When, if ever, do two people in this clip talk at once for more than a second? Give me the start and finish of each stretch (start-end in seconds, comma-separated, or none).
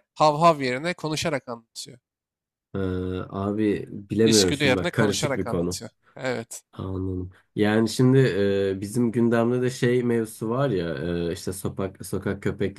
4.2-5.8